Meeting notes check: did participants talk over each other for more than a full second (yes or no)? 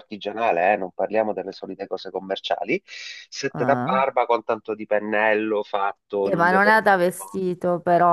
yes